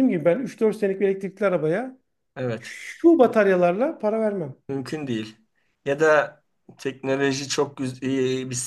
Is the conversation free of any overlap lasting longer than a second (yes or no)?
yes